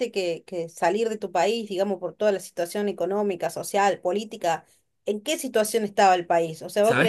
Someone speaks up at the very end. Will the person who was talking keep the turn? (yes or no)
yes